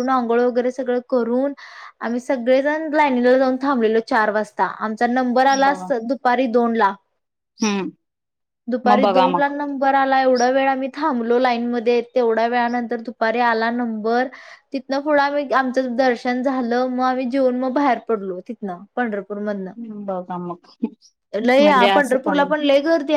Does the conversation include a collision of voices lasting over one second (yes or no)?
no